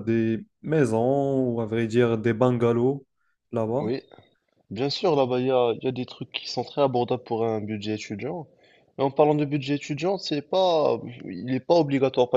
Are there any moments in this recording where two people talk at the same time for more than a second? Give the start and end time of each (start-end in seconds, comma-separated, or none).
none